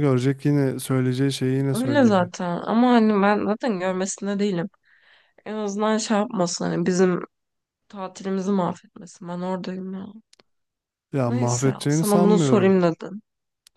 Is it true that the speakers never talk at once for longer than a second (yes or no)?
no